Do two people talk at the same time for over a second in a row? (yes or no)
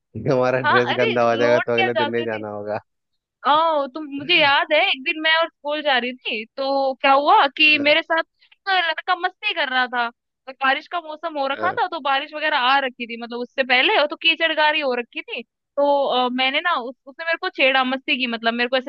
yes